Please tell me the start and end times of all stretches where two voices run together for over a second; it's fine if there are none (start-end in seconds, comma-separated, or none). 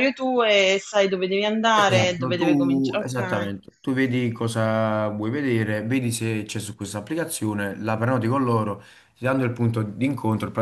1.8-3.5